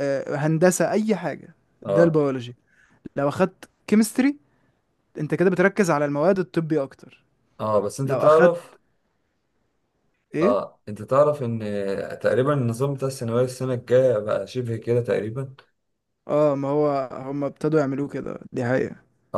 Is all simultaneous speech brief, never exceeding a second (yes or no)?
yes